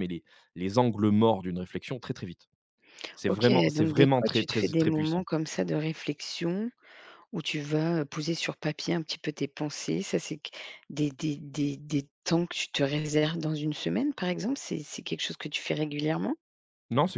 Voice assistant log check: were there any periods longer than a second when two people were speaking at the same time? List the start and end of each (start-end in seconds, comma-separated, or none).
3.3-5.3